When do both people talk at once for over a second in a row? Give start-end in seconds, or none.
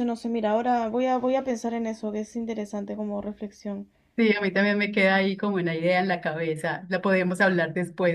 none